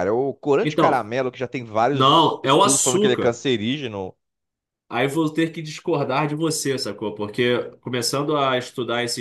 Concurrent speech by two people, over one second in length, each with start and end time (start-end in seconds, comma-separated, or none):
1.9-3.4